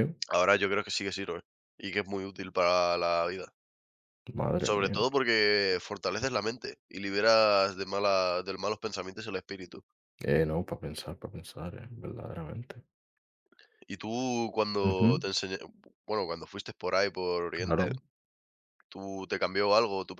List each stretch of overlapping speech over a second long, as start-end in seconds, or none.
none